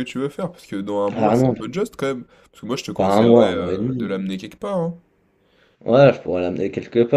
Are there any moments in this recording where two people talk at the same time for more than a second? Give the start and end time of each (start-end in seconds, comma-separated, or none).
3.0-4.2